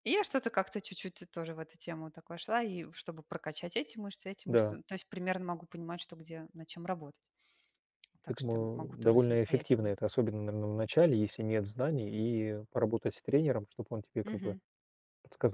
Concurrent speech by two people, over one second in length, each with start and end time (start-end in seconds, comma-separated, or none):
8.3-9.9